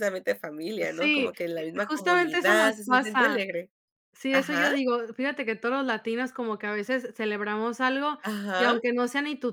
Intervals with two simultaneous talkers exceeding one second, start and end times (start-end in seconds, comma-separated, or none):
1.0-3.4